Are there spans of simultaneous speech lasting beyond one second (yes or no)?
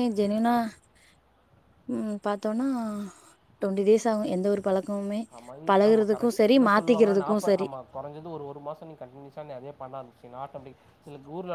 yes